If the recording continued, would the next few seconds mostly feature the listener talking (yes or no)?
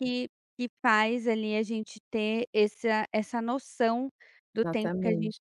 no